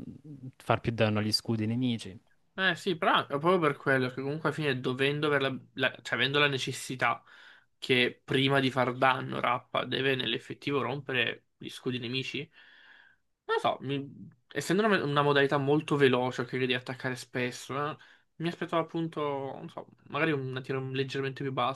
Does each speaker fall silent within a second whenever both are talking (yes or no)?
yes